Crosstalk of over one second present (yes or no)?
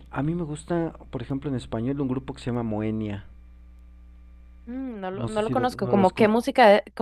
yes